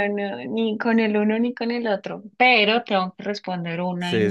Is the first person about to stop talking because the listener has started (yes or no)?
yes